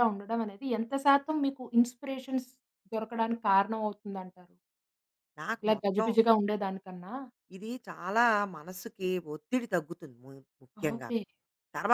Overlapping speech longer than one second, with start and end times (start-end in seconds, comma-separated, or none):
none